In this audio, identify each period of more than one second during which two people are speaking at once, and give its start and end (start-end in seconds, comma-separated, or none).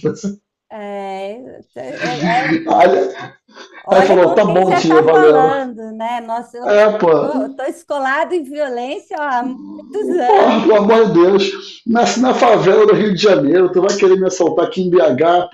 3.9-5.5